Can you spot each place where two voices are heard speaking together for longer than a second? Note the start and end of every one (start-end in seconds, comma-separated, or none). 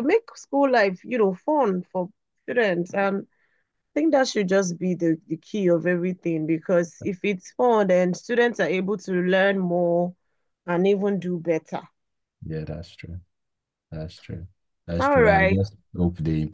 none